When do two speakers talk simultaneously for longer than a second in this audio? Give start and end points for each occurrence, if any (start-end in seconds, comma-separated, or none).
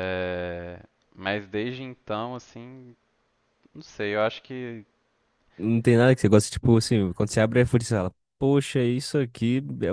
none